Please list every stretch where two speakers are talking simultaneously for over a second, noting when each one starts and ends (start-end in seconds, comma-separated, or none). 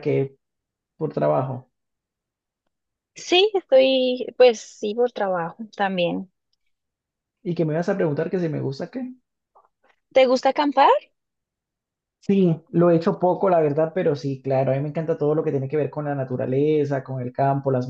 none